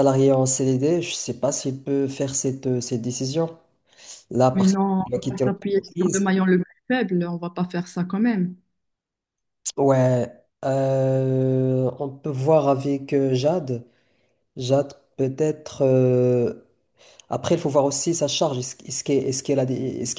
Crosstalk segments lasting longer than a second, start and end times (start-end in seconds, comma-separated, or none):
4.5-6.3